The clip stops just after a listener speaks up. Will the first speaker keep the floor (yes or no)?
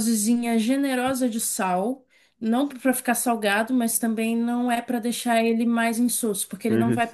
yes